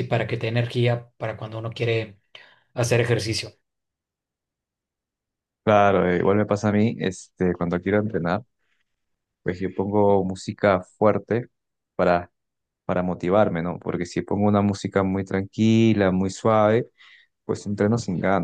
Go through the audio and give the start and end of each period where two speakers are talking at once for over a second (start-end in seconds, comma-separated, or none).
none